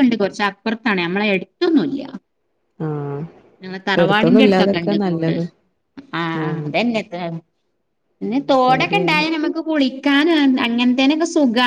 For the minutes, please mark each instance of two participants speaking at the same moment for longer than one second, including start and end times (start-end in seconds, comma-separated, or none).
4.1-5.3